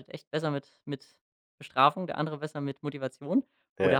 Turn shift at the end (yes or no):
no